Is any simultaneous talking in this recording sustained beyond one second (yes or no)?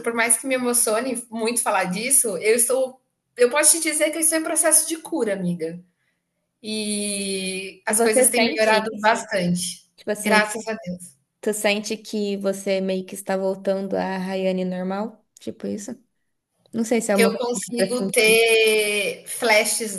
yes